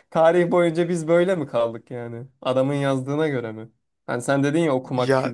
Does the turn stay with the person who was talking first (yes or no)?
no